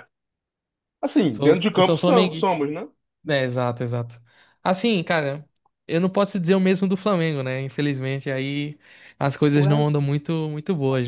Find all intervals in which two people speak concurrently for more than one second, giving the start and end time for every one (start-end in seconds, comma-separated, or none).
1.3-2.5